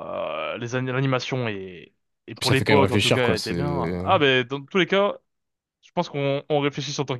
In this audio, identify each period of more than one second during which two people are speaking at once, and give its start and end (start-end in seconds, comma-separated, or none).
2.4-4.2